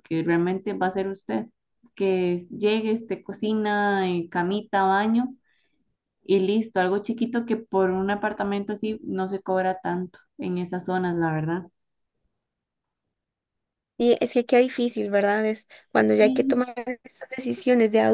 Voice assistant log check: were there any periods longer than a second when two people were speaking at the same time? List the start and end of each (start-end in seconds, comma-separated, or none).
none